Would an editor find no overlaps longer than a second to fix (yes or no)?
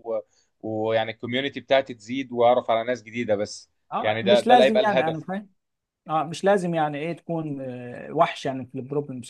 no